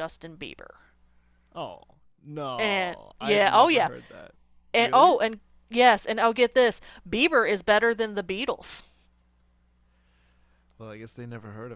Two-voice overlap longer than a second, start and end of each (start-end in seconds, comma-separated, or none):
2.6-3.9